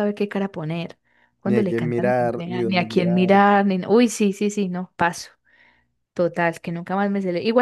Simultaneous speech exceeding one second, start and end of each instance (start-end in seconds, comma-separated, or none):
1.4-3.3